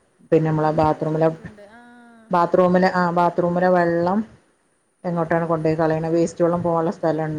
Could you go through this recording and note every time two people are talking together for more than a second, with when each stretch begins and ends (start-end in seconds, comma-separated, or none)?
none